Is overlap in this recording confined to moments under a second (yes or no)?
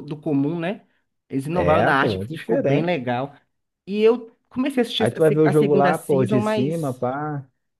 no